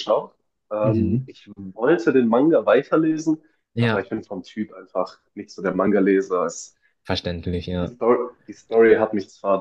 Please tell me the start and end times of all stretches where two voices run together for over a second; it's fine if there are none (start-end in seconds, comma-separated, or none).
none